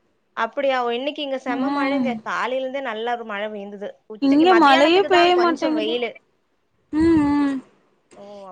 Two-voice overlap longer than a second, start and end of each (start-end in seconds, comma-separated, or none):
4.3-6.0